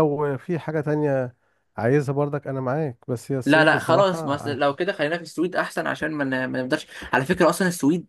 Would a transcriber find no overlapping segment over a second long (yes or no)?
no